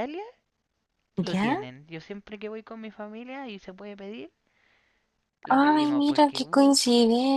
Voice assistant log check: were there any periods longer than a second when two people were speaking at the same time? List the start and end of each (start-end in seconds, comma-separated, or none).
5.5-6.8